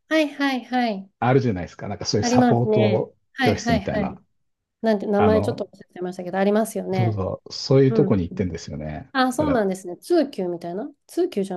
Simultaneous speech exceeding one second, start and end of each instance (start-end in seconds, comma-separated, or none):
2.2-4.2